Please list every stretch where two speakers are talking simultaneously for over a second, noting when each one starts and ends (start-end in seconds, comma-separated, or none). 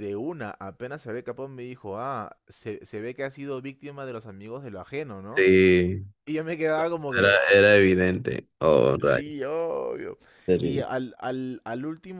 none